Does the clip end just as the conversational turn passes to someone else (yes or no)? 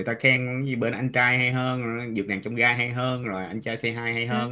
no